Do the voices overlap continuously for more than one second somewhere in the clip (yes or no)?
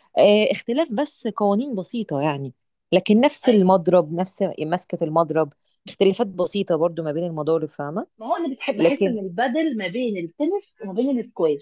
no